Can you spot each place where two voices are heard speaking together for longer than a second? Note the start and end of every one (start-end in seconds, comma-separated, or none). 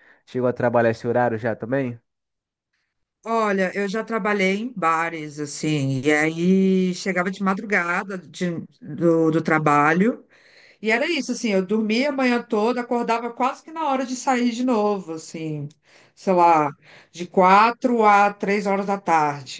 none